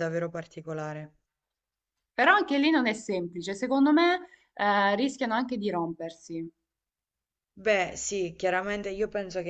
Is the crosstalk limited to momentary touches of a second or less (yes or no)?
yes